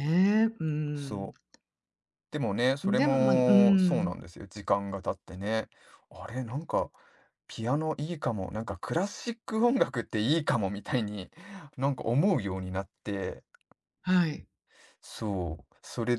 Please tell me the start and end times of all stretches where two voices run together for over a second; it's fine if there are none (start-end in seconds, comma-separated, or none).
2.8-4.2